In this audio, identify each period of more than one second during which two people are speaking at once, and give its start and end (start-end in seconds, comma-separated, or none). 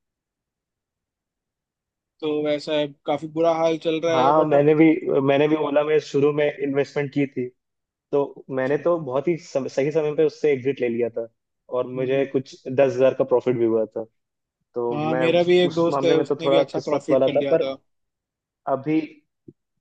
14.9-17.7